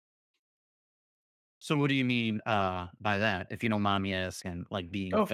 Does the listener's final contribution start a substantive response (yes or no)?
yes